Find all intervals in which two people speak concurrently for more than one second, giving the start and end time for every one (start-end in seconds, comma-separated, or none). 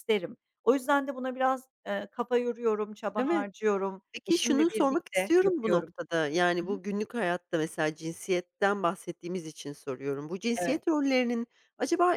4.1-5.9